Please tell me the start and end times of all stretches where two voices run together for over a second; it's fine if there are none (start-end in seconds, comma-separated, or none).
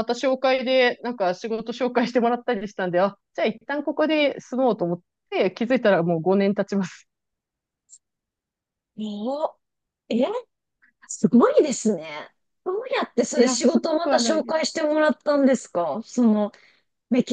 13.3-14.6